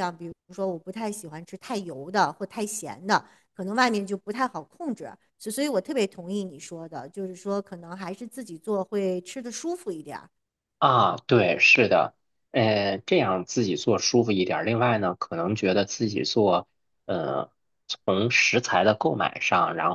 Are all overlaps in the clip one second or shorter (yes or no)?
yes